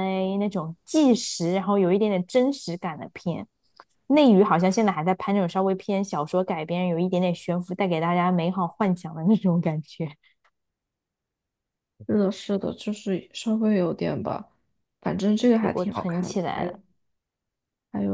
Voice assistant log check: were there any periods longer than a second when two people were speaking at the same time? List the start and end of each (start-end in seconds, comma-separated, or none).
15.4-16.8